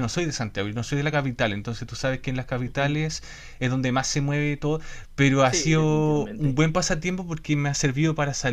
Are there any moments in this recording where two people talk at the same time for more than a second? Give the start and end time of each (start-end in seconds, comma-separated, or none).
5.4-6.6